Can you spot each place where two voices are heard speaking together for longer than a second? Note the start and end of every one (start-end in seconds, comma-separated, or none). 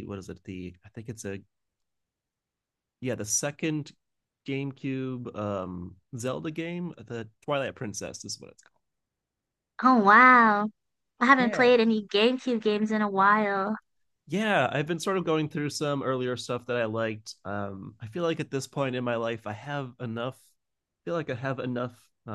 none